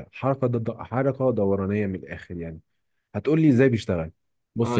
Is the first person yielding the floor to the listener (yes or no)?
yes